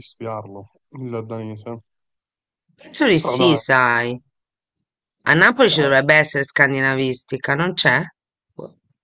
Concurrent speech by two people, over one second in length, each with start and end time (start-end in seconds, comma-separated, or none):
none